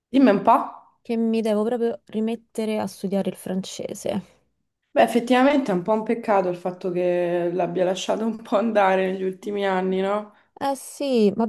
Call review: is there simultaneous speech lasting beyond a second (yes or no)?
no